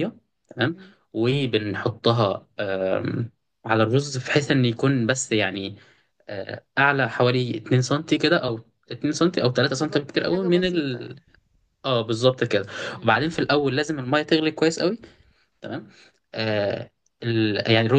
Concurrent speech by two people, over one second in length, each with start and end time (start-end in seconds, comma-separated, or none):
9.8-11.2